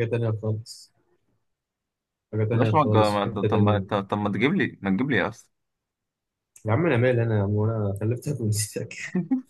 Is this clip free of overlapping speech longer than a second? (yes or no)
no